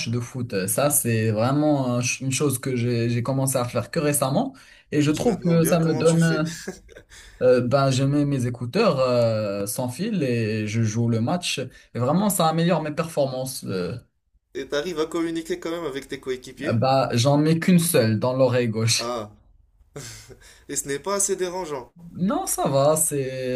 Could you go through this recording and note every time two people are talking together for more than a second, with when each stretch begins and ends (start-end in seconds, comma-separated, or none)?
5.1-6.4